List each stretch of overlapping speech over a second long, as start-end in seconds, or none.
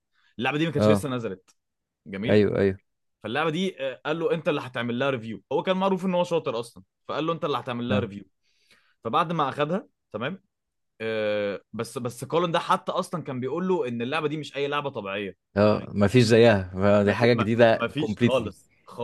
17.0-18.5